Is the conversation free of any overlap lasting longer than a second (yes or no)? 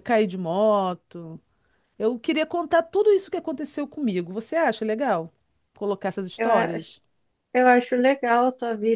yes